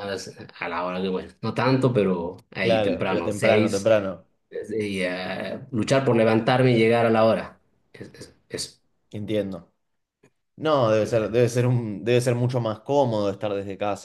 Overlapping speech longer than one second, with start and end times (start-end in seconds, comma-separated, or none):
2.6-3.9